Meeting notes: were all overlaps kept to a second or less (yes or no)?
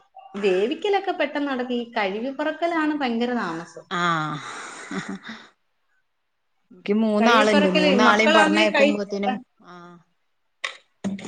no